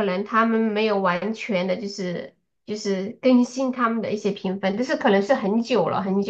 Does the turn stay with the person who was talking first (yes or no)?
no